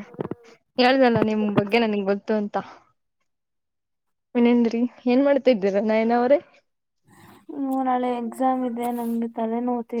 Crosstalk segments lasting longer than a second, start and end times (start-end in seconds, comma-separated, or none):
none